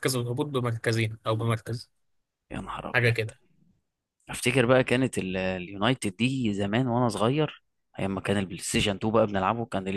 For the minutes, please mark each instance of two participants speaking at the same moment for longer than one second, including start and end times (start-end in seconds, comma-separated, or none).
none